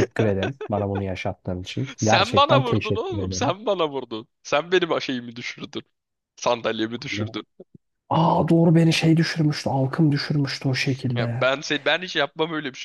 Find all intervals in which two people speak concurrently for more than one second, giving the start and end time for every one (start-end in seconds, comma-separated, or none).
2.0-3.5